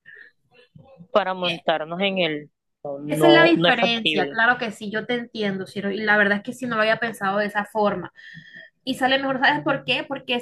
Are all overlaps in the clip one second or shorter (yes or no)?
no